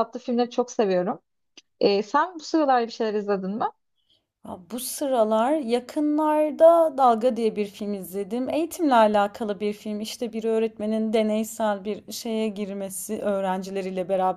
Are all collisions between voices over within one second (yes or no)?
yes